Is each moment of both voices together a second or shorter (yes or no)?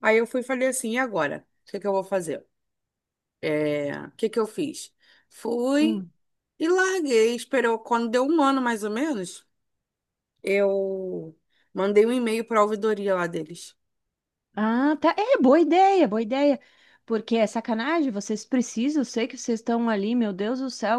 yes